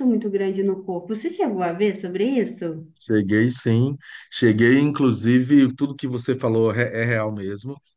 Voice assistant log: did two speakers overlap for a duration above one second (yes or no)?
no